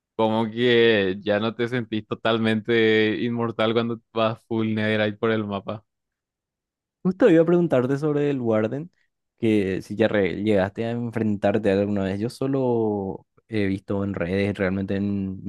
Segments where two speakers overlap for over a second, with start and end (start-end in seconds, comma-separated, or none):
none